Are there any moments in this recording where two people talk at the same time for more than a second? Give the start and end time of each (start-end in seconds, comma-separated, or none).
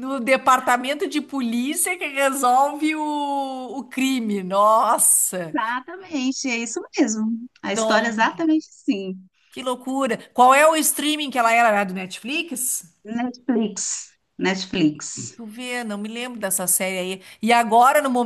none